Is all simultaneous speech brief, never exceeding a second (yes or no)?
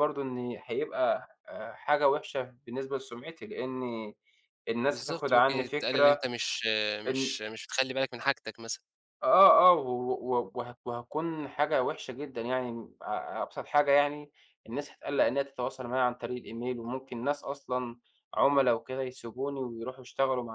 no